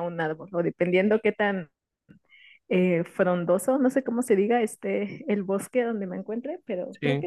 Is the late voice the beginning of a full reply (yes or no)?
no